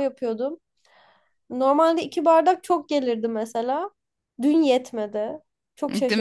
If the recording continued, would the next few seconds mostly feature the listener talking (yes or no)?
yes